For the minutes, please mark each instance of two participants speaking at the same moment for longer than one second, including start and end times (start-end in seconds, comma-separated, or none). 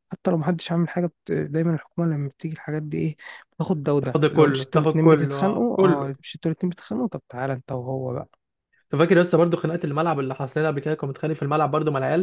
4.0-6.1